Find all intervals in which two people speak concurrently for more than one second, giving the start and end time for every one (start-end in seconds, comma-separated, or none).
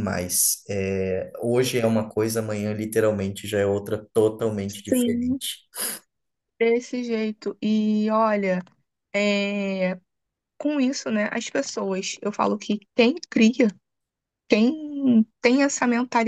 none